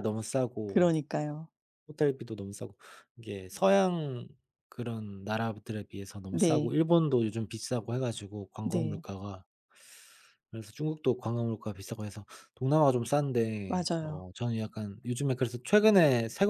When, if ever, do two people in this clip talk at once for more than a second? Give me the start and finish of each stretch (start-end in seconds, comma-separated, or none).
none